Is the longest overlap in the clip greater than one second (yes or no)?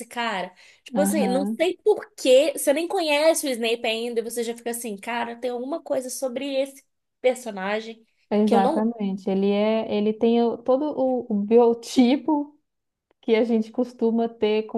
no